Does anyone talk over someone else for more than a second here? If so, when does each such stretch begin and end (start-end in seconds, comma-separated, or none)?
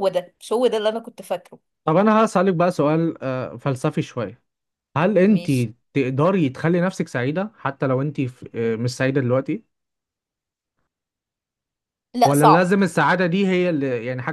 none